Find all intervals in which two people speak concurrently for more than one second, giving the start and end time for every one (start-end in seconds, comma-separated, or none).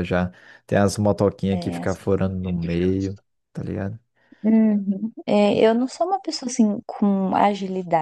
none